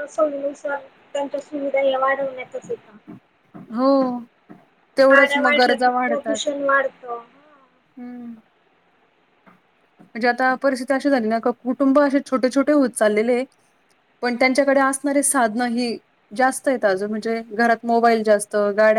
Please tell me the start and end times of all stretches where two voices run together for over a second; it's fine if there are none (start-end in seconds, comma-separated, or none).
5.1-6.5